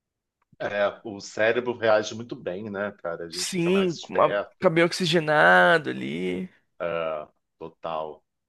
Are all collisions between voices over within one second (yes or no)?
no